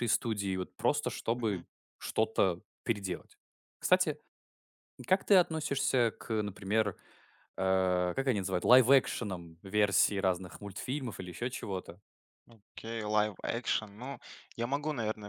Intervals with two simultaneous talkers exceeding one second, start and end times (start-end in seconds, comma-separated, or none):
none